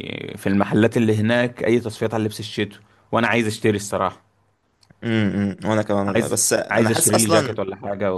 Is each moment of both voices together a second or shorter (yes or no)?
no